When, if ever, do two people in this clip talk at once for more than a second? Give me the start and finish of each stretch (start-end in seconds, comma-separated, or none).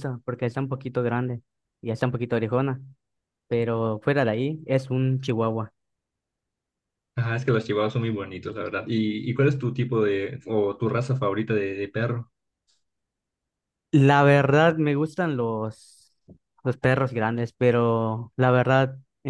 none